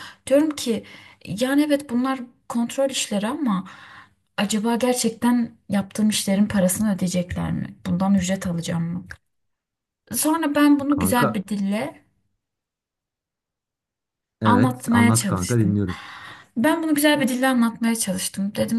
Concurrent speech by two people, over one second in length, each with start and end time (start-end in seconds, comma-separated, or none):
14.4-15.8